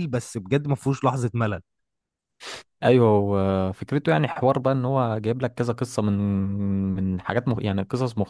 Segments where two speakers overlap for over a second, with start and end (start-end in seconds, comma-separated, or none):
none